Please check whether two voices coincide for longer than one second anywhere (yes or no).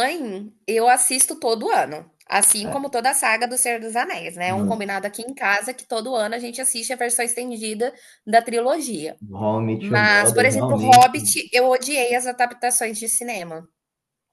yes